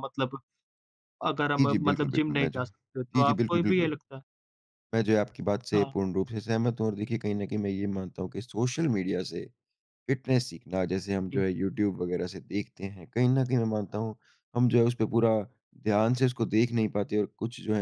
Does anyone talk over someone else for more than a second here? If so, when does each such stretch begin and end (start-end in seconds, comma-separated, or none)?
1.6-3.9